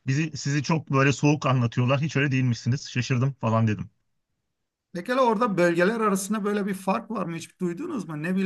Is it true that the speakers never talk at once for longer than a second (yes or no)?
yes